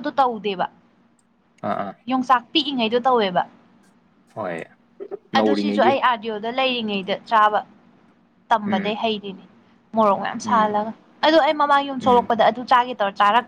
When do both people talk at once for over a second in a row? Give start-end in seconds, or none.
none